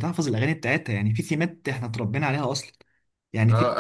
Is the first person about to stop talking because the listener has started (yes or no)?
yes